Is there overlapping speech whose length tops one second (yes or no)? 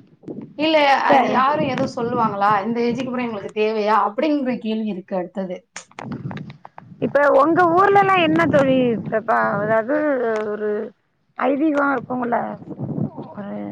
no